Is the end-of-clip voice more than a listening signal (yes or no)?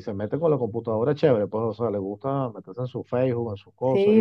yes